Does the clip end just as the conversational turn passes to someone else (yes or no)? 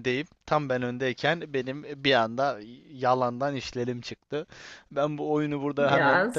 no